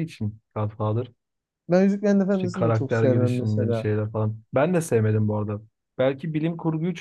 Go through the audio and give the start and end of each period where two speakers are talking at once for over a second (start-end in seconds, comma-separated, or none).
2.3-3.9